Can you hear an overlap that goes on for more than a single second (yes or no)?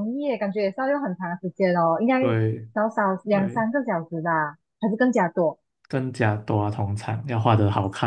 no